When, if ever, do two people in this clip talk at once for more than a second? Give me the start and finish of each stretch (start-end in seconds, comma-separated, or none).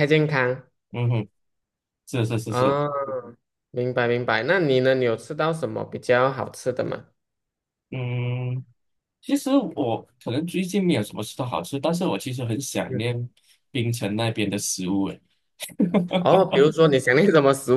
none